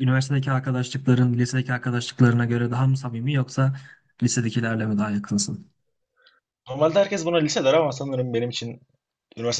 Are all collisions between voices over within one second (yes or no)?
yes